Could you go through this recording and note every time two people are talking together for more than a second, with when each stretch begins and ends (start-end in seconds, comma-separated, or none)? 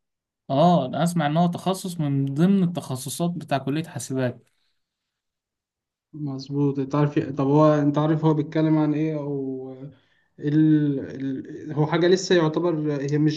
none